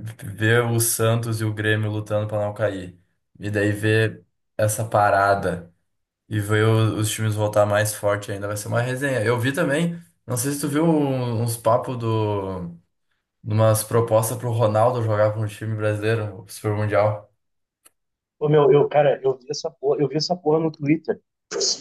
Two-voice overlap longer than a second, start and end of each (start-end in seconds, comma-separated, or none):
none